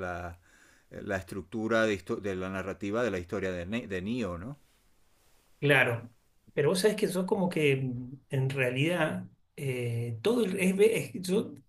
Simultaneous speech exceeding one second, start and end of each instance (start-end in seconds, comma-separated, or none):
none